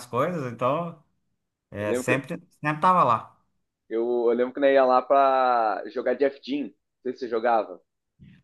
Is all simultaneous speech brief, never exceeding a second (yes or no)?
yes